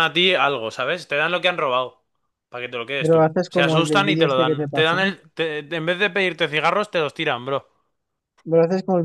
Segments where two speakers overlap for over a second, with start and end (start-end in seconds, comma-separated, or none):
3.0-5.0